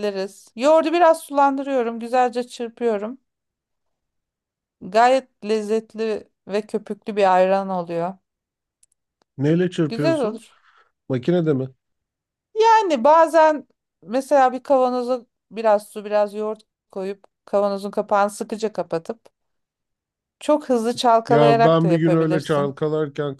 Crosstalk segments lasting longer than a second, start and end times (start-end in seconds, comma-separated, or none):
21.3-22.7